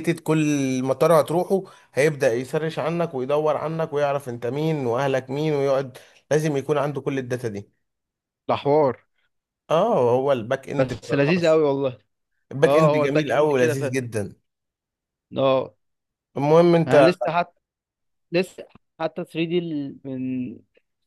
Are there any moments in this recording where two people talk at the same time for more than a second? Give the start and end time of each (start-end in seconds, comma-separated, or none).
12.6-14.0